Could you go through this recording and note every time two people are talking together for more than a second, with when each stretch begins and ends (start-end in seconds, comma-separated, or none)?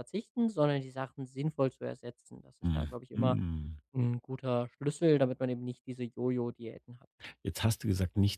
none